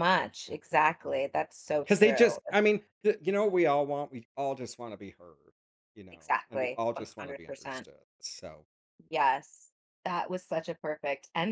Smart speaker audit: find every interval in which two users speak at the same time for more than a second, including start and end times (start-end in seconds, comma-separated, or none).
6.1-7.9